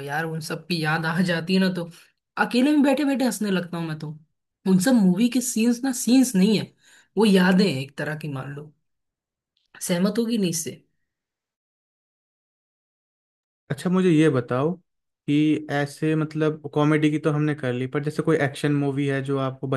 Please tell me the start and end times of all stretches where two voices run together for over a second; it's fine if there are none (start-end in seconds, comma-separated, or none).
none